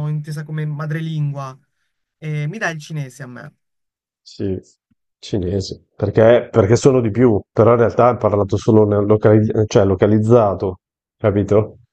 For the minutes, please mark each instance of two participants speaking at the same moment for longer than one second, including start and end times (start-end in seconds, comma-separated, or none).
none